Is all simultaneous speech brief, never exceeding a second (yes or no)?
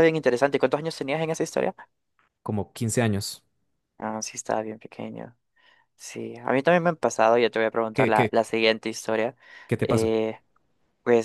yes